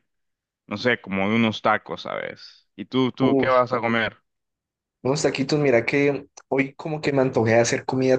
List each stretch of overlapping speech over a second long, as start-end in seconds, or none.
none